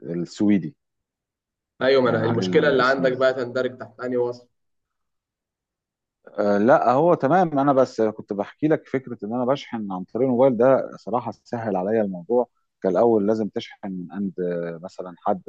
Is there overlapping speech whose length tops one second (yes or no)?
yes